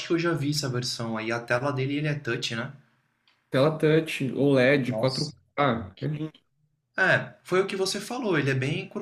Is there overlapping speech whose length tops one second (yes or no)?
no